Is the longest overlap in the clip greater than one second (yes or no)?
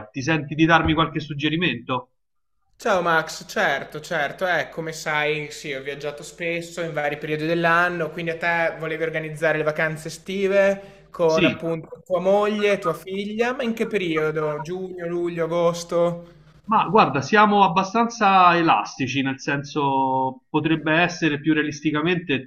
no